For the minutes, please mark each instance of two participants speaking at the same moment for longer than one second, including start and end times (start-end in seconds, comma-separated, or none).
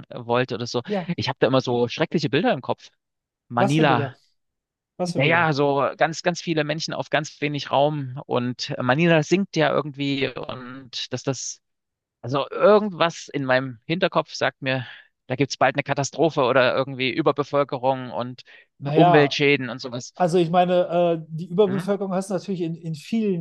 none